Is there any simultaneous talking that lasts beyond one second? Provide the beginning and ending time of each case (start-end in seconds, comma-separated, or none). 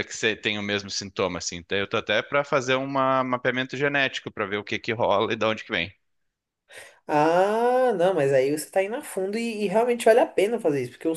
none